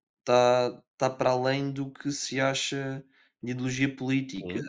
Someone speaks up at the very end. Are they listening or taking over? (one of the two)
listening